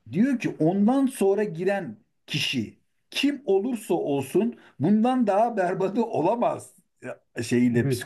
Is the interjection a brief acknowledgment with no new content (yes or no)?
no